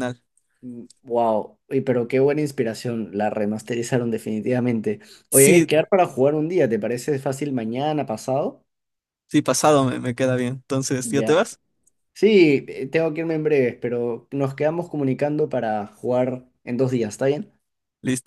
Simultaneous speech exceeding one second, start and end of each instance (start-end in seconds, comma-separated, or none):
none